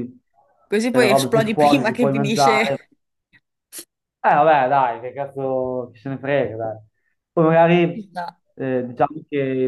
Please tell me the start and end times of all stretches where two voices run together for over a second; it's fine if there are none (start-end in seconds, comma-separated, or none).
0.9-2.8